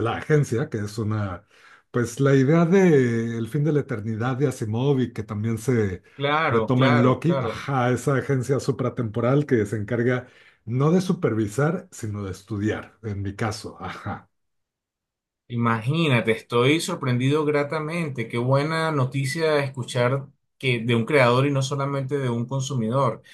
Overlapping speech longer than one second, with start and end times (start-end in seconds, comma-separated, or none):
6.5-7.7